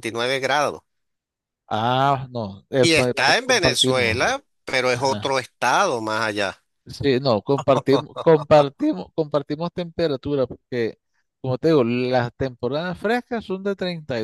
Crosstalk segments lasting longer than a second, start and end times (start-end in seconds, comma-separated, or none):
2.8-4.2